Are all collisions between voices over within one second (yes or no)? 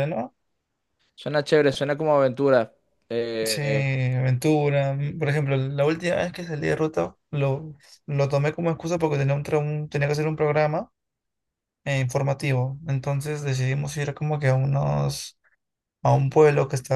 yes